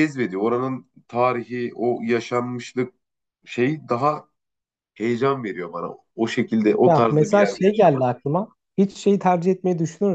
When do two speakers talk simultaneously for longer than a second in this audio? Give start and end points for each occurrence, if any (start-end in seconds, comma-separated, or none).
6.8-8.1